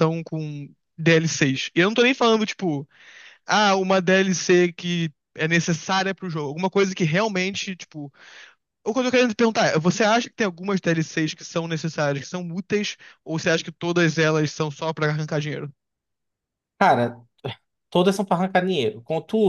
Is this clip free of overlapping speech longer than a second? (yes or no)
yes